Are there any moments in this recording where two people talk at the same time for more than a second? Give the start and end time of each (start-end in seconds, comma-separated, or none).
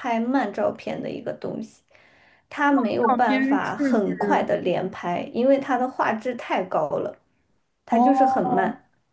3.1-4.5